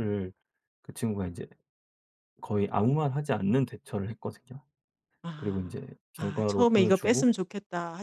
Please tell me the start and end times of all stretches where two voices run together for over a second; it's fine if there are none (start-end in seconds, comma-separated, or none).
5.4-7.3